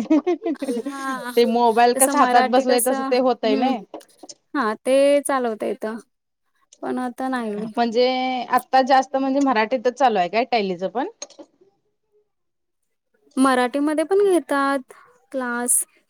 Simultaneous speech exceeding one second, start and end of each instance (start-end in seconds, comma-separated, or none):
1.9-3.7